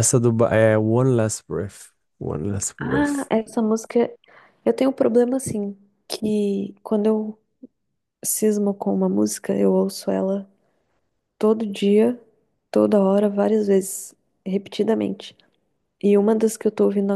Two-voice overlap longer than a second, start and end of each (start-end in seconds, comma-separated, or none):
none